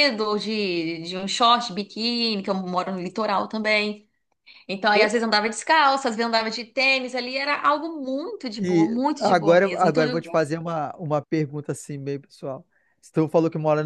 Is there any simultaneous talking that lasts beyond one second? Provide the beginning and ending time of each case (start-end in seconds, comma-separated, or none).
8.6-10.2